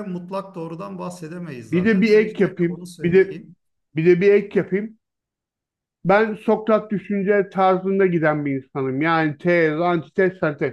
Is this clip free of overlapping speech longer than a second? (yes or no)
no